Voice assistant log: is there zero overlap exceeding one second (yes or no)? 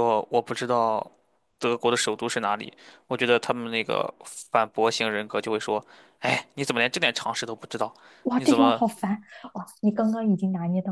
yes